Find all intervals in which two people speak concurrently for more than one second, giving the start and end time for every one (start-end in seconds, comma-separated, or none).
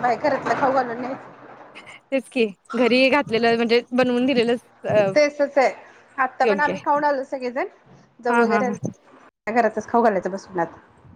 none